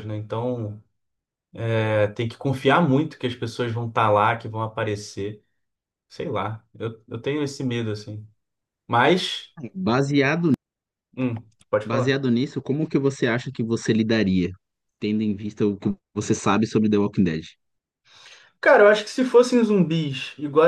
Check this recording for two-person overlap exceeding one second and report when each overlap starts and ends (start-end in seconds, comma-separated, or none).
none